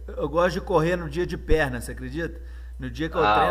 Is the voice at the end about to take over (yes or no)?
no